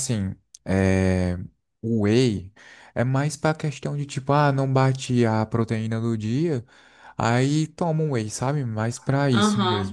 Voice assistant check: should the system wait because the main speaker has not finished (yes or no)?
no